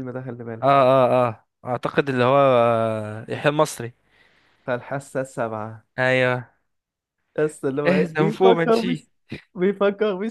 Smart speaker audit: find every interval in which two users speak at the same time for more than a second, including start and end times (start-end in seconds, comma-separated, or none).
7.9-9.1